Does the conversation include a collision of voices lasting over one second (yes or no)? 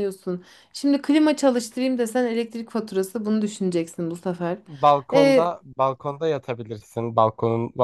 no